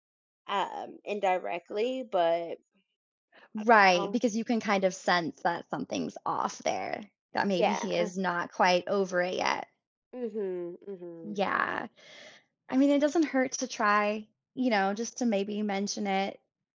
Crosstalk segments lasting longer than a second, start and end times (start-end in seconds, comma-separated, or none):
none